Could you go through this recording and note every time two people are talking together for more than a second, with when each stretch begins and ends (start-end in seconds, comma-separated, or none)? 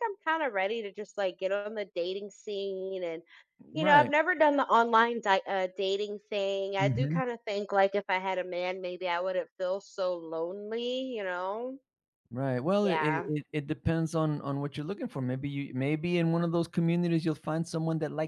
none